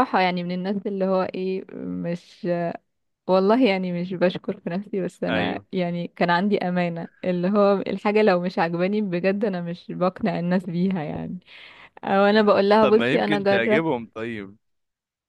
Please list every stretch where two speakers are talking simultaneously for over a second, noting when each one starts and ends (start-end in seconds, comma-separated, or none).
12.3-13.9